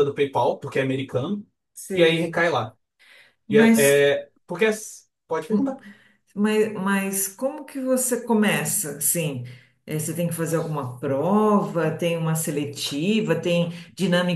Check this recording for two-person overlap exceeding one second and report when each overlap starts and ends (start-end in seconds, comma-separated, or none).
none